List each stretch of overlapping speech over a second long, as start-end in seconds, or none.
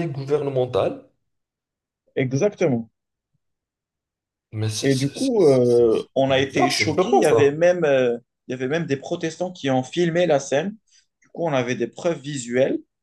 4.8-7.5